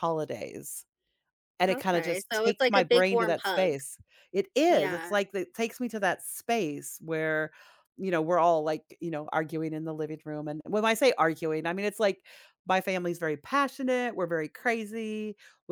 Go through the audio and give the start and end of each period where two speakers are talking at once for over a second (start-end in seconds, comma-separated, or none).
1.7-3.7